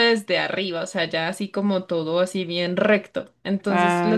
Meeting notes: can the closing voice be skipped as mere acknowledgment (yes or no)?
yes